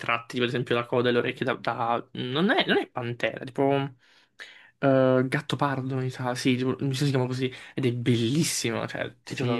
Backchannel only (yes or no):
no